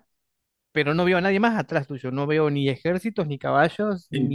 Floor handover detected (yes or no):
yes